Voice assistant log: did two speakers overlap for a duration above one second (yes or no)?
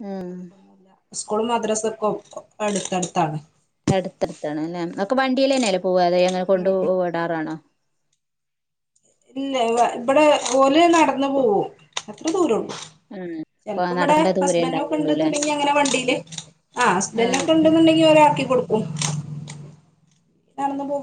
no